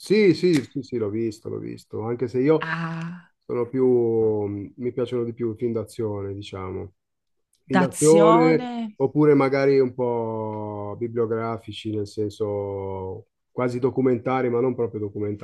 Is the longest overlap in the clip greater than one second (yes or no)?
yes